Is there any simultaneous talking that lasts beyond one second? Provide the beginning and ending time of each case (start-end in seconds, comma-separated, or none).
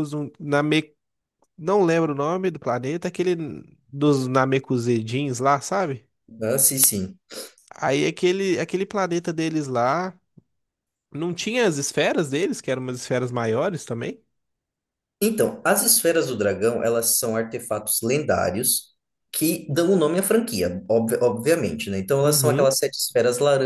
none